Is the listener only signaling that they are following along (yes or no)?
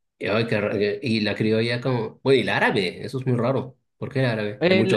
no